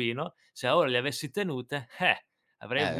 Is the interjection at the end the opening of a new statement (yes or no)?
yes